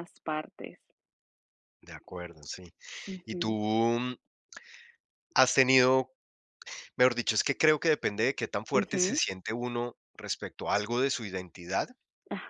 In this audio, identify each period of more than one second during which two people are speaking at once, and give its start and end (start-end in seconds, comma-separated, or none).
none